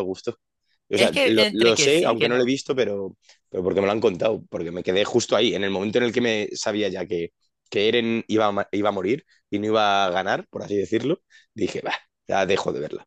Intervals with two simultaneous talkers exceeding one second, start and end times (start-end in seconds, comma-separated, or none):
0.9-2.5